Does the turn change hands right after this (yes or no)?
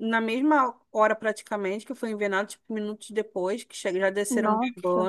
no